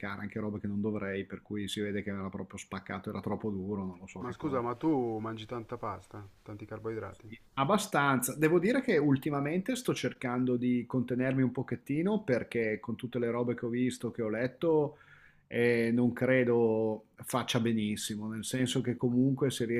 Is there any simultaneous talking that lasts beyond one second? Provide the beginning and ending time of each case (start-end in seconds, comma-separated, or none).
none